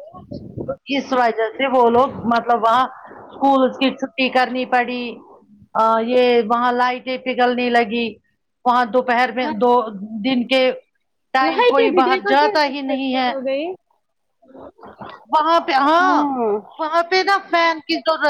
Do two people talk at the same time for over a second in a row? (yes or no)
yes